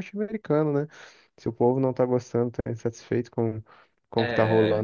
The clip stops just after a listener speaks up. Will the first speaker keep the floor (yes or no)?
yes